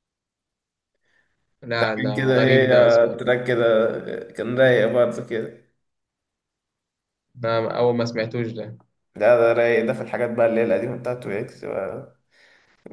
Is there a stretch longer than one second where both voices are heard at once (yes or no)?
yes